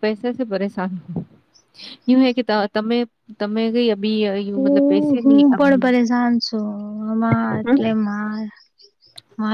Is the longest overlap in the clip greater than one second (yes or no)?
yes